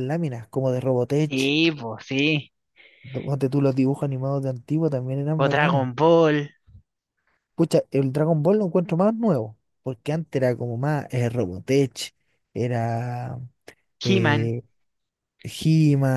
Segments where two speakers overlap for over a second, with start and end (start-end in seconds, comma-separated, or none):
none